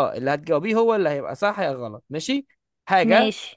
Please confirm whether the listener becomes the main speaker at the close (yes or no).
no